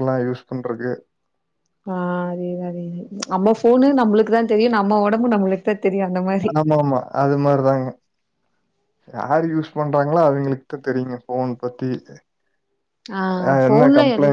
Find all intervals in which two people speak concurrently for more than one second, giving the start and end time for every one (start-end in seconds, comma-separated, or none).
none